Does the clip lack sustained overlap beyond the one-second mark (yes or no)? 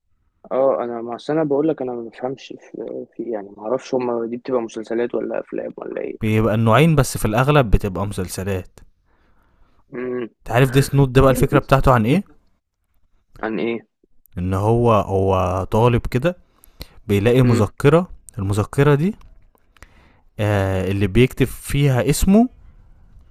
yes